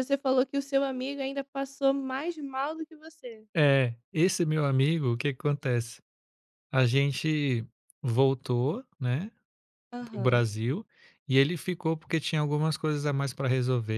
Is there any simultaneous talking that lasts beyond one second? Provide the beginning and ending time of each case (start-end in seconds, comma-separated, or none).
none